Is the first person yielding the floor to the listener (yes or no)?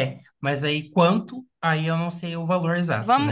yes